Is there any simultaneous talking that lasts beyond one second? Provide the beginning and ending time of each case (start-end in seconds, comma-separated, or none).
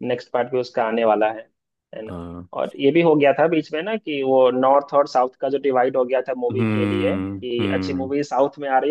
6.5-8.1